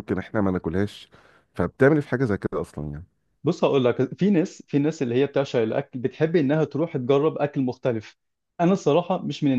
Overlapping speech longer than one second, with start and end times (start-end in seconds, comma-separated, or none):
none